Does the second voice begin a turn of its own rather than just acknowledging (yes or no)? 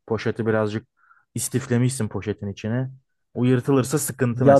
yes